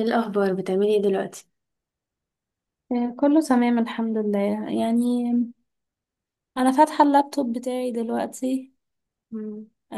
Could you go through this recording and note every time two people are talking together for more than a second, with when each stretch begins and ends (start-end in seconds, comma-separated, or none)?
none